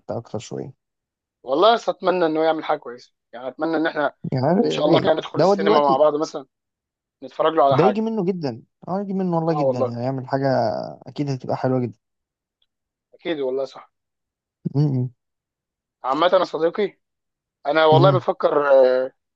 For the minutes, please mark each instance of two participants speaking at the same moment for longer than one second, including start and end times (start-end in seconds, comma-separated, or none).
4.6-6.0